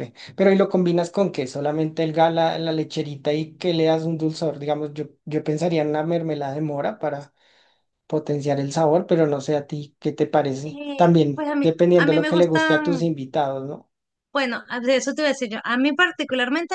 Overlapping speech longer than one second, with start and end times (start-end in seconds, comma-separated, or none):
10.6-13.1